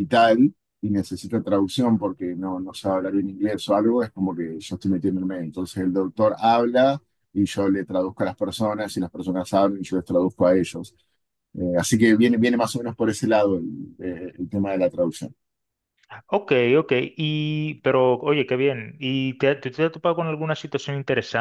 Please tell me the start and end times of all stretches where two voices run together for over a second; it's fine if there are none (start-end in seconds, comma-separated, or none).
none